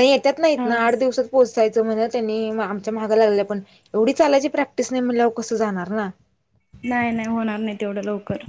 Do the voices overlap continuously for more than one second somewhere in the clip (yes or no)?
no